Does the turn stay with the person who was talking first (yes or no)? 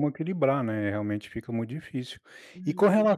no